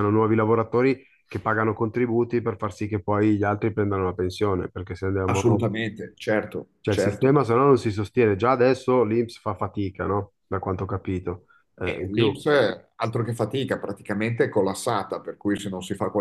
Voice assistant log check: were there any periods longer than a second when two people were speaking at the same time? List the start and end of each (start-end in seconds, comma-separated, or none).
none